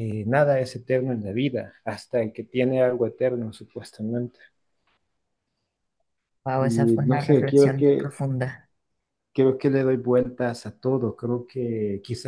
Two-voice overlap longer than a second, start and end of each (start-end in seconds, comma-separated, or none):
6.6-8.2